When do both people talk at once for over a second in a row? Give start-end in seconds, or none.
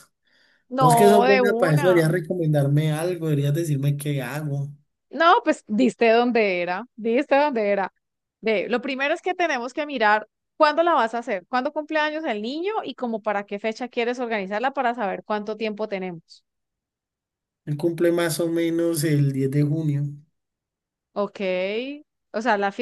0.8-2.0